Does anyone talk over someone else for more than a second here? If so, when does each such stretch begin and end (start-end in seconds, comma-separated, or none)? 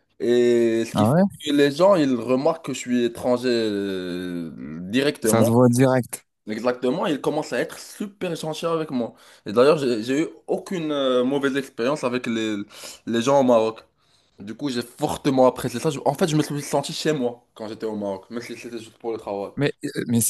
none